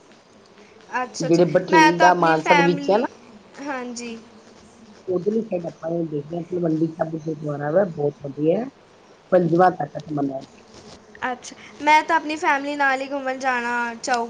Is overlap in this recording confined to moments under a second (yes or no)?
no